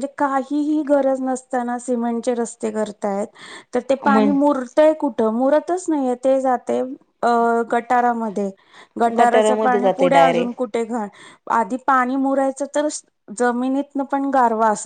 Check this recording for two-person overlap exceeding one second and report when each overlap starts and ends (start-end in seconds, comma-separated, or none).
9.2-10.5